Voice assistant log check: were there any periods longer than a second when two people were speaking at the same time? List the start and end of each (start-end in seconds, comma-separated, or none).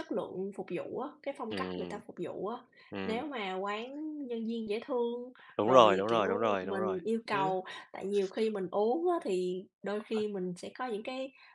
5.6-7.0